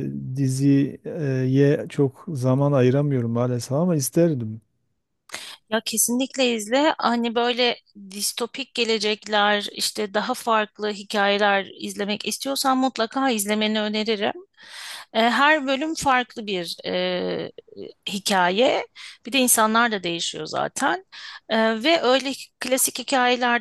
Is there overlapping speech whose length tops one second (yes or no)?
no